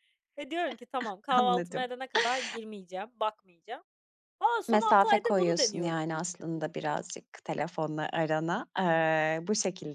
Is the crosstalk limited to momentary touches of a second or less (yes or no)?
no